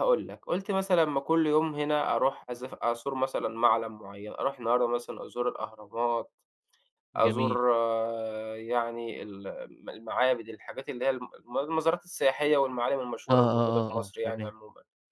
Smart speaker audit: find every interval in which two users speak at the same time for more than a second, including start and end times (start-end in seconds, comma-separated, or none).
13.3-14.5